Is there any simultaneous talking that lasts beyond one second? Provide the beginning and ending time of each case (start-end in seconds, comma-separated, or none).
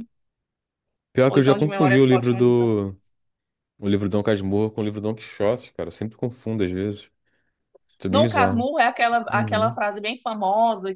1.3-3.0